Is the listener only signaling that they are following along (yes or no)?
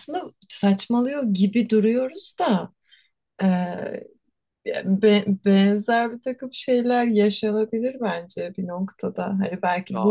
yes